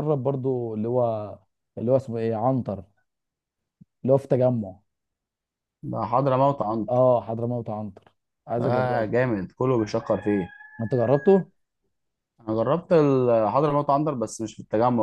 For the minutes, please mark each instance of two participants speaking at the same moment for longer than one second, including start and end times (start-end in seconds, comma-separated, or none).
none